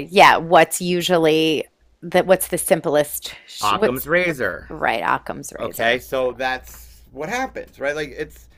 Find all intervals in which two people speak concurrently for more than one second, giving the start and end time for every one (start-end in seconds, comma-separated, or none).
none